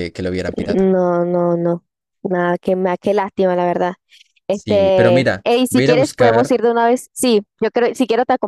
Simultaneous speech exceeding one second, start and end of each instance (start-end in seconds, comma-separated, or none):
4.5-6.5